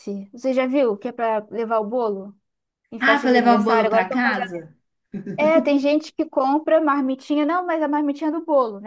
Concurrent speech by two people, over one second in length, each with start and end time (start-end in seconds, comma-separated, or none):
3.0-4.5